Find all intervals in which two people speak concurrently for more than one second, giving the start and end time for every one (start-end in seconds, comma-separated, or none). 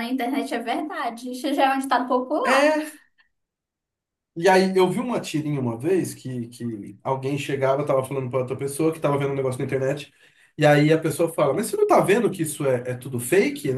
none